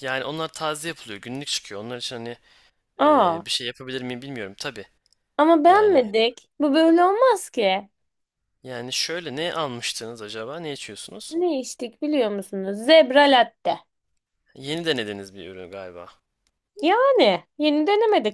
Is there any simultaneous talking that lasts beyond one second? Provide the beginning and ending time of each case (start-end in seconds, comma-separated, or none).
none